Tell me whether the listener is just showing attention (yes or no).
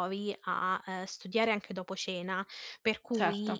yes